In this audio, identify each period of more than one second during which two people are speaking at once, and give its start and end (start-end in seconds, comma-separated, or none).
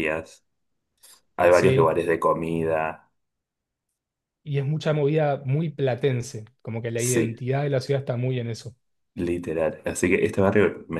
none